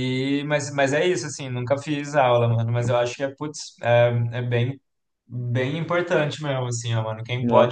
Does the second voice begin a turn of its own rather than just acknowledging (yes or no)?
no